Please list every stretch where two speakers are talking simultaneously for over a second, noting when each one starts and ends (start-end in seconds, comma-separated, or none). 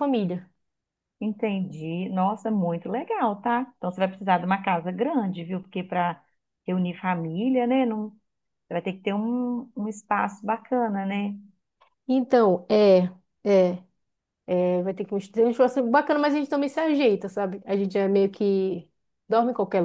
none